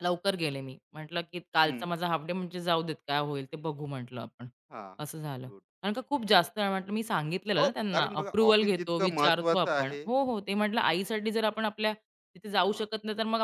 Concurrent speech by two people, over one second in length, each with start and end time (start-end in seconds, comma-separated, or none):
7.6-10.0